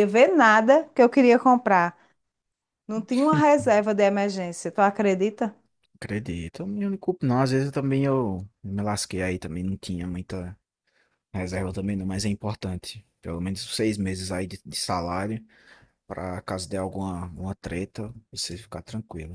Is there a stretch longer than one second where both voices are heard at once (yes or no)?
no